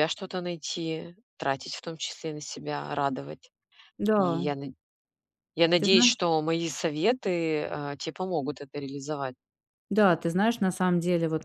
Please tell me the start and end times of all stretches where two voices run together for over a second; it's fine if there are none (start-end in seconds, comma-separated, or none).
none